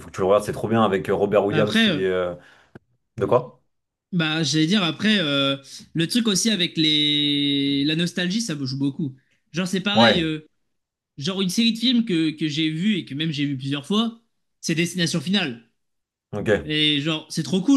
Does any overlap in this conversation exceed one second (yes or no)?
no